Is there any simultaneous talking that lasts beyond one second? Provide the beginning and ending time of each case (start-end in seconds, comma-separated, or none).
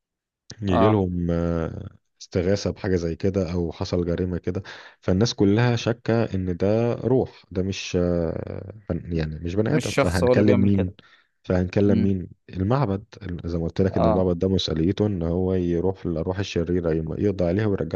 9.6-10.9